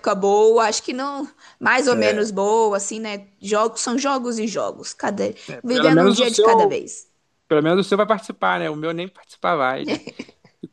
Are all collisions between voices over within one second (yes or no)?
no